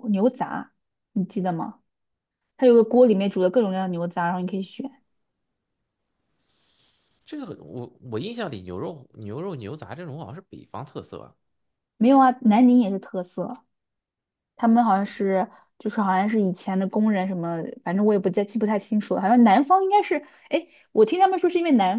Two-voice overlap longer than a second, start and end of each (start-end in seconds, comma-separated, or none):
none